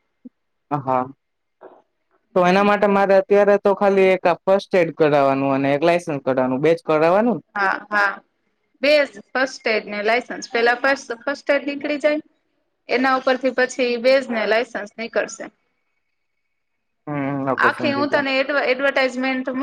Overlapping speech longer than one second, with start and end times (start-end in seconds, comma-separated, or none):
none